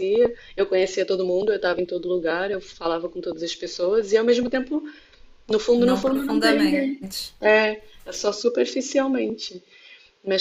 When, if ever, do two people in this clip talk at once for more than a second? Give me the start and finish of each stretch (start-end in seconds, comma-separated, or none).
5.8-7.3